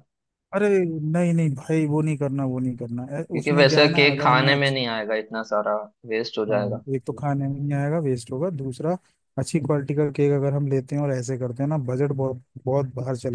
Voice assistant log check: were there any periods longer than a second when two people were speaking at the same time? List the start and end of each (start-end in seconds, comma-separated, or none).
3.3-4.8